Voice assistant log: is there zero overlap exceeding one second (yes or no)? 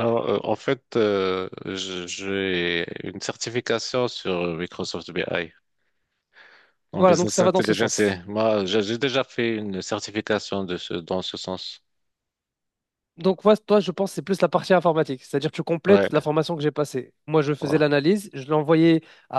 no